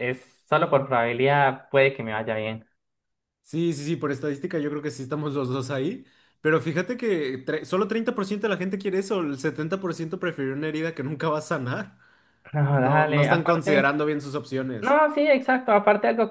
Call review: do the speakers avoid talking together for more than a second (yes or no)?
no